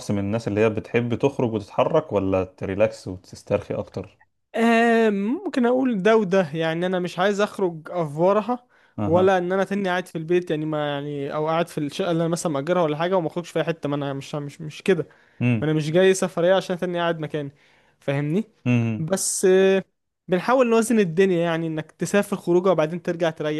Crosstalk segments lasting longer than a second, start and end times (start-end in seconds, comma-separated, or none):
none